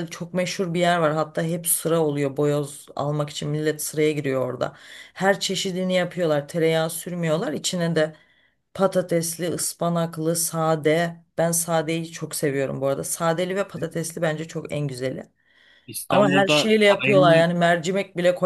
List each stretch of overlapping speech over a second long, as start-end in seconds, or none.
16.1-17.4